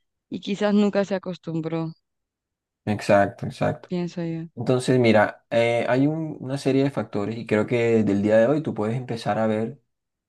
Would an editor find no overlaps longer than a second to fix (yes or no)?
yes